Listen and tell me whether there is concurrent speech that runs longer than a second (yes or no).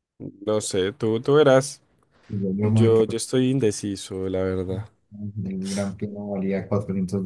no